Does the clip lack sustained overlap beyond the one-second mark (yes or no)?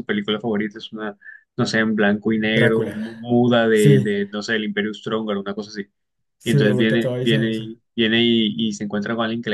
no